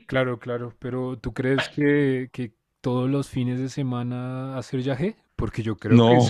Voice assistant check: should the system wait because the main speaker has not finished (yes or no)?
yes